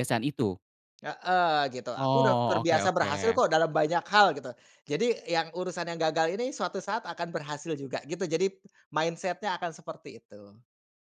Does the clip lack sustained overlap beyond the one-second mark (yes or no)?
no